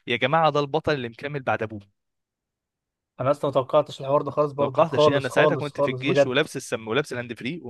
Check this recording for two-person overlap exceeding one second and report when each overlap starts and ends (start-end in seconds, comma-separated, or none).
4.6-6.5